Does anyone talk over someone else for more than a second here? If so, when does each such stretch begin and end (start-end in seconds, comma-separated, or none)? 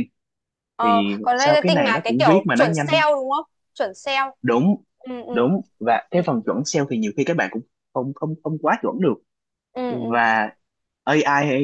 0.8-3.0